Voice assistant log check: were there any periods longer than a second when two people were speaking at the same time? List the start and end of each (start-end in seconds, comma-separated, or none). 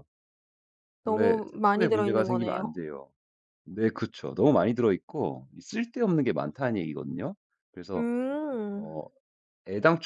1.0-2.7